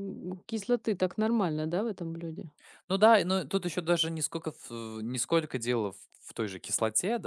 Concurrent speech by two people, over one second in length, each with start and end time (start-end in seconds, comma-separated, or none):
none